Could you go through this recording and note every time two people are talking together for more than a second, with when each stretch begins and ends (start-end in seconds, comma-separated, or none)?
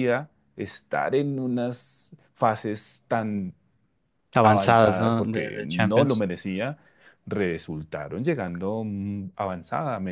4.4-6.3